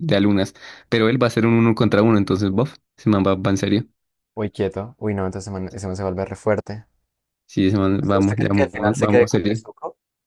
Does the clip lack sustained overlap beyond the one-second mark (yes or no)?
no